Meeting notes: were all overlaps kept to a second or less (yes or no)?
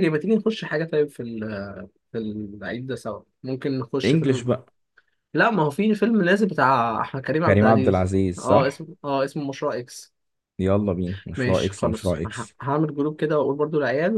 no